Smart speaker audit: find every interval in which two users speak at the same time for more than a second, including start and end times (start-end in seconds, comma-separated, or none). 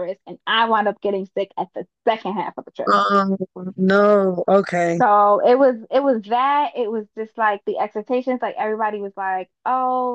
none